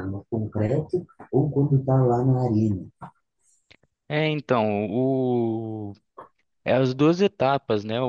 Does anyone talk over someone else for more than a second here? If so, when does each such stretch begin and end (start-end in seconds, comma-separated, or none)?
none